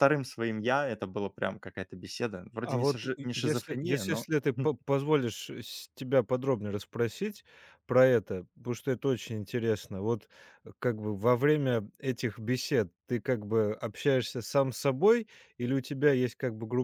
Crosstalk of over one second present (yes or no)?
yes